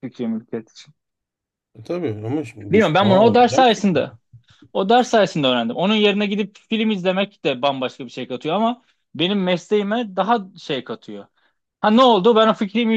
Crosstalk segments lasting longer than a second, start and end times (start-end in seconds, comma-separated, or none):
2.7-3.9